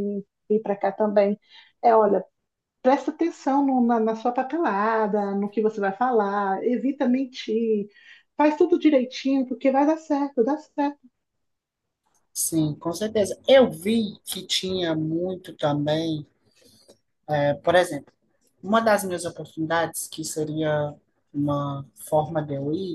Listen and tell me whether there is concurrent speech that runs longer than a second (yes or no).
no